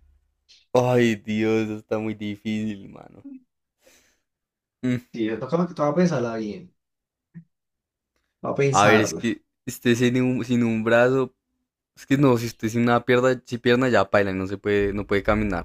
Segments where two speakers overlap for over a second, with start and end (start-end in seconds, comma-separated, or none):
none